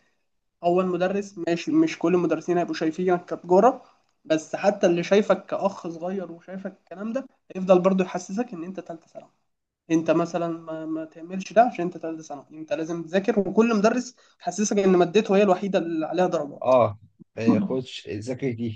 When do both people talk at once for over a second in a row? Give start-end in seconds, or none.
none